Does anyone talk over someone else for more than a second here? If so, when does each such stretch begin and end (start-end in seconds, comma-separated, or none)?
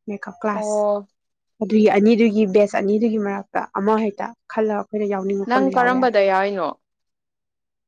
none